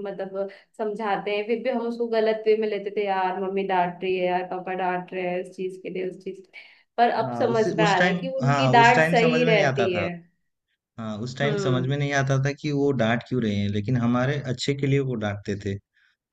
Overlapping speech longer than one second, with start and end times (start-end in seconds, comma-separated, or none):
7.2-10.1